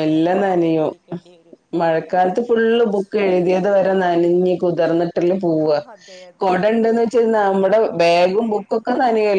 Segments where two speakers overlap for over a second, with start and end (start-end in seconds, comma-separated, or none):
none